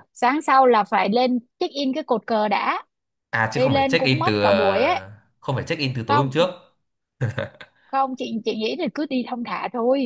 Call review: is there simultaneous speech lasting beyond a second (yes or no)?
yes